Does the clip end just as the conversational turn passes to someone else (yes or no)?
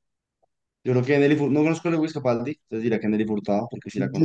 yes